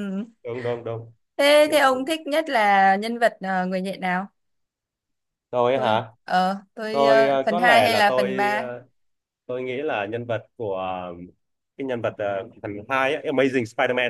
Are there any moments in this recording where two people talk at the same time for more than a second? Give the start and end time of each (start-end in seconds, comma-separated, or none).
6.9-8.7